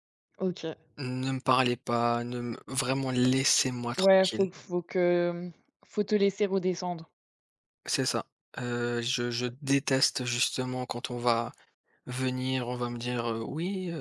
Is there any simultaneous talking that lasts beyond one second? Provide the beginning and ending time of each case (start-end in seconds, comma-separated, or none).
none